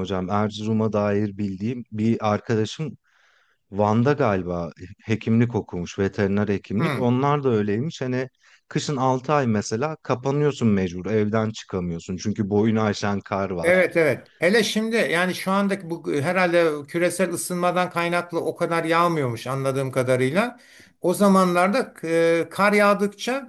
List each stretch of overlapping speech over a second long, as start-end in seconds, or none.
none